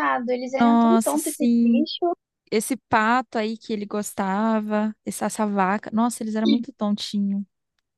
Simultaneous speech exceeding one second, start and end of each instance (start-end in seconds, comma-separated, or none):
0.6-1.9